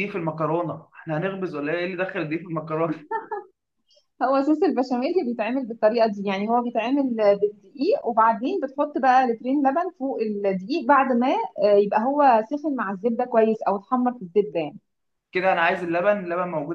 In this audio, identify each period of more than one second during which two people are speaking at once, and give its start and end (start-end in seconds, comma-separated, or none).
none